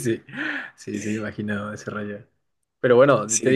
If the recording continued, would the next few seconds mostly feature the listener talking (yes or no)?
no